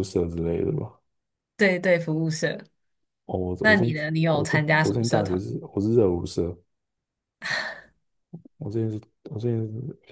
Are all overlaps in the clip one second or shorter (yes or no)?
no